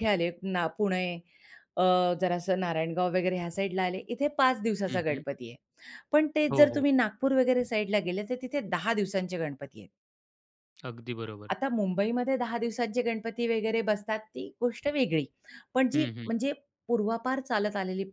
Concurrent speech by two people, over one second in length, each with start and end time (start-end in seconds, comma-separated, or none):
none